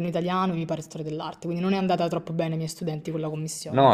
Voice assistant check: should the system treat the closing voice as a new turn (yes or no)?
yes